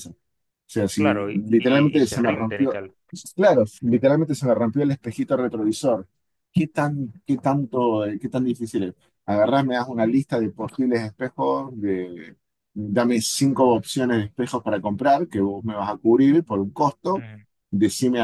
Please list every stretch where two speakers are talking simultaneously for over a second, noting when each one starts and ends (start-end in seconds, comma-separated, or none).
0.9-2.8